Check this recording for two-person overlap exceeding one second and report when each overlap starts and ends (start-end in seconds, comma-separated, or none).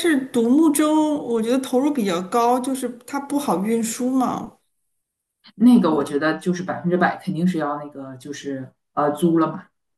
none